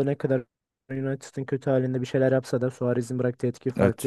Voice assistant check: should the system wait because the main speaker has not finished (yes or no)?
no